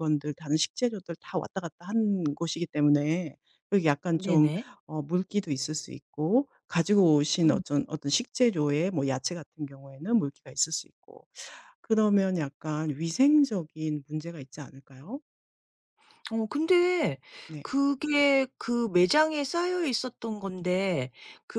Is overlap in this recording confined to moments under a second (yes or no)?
yes